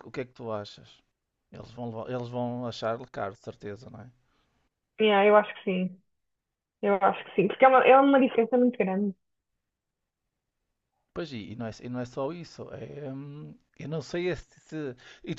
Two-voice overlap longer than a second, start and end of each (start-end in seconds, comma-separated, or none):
none